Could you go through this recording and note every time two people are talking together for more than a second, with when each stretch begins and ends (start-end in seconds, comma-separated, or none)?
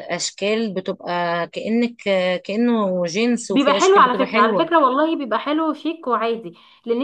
3.5-4.7